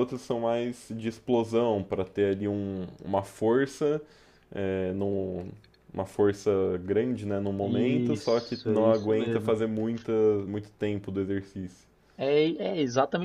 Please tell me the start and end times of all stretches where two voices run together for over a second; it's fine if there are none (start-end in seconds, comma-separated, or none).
7.6-9.6